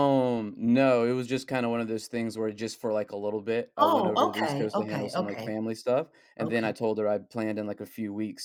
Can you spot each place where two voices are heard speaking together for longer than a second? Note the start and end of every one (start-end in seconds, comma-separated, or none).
3.8-5.5